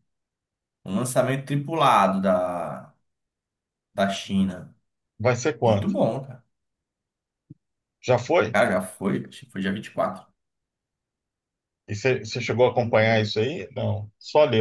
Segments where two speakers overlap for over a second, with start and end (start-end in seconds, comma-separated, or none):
none